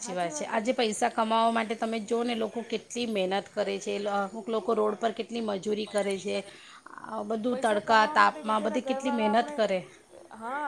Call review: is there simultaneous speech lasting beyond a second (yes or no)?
yes